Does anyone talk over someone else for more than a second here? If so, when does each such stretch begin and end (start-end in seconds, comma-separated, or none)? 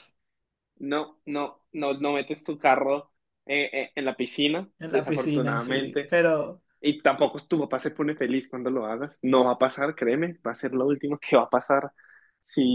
4.8-6.2